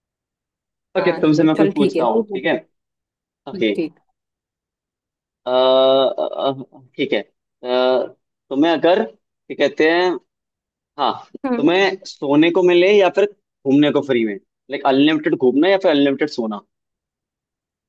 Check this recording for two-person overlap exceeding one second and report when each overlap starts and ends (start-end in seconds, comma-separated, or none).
1.0-2.5